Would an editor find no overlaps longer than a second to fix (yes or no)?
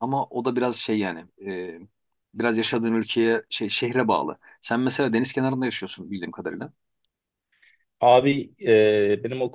yes